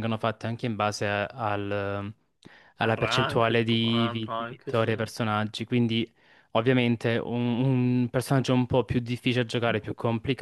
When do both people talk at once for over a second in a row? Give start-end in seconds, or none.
2.8-5.0